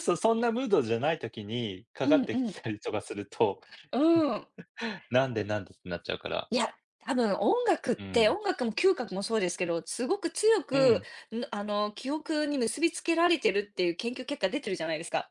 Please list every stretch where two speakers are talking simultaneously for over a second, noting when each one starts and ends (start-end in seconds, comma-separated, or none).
none